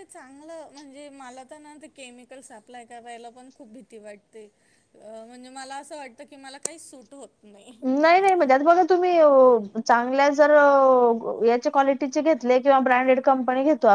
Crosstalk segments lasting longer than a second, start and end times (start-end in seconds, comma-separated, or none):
none